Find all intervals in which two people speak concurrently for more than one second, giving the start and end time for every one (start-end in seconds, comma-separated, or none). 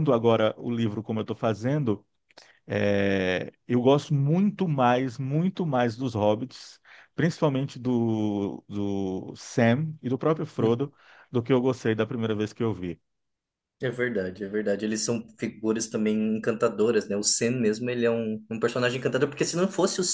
none